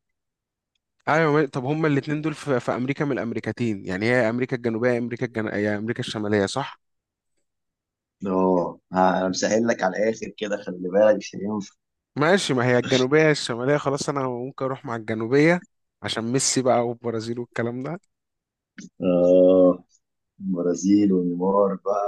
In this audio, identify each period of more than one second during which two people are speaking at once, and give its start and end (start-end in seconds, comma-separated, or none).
none